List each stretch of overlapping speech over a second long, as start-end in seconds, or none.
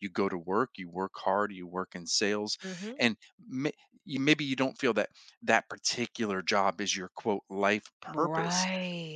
none